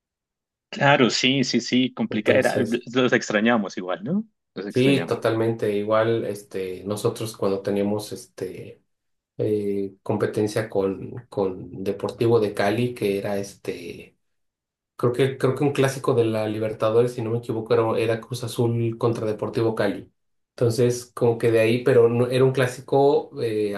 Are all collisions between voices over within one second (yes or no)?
yes